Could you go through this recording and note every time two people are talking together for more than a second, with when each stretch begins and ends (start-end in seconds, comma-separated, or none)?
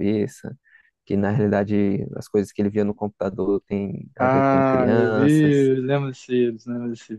4.2-5.7